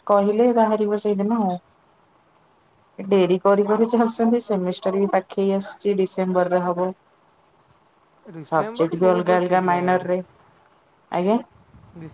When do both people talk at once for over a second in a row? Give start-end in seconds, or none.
8.5-10.1